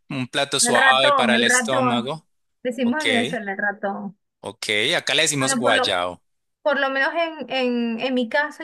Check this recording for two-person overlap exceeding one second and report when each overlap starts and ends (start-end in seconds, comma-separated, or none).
0.6-2.1